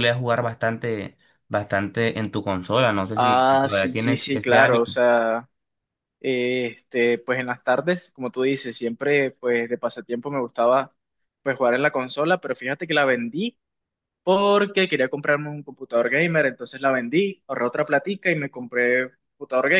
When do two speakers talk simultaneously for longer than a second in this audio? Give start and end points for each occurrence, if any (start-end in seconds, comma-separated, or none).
3.1-4.9